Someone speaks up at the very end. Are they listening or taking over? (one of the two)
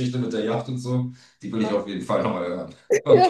taking over